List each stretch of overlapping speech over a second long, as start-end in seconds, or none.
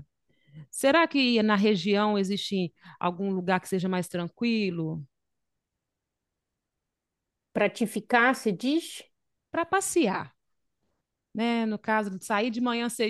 none